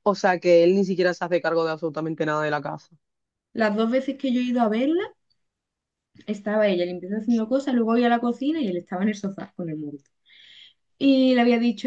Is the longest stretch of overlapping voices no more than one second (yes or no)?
yes